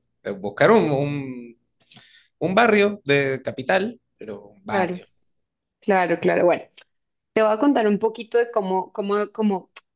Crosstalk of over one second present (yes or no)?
no